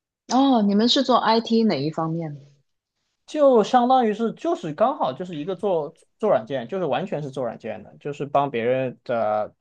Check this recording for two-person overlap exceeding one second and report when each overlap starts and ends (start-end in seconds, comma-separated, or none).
none